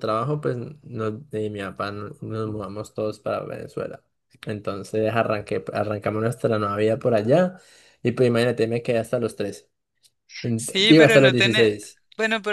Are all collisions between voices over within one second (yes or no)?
no